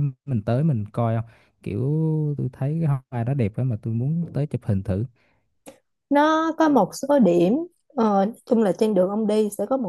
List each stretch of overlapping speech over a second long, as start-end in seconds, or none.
none